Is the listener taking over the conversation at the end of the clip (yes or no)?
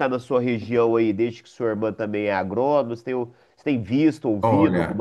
yes